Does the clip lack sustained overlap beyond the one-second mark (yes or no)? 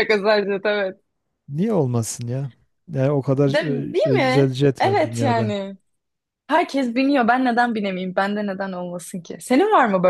no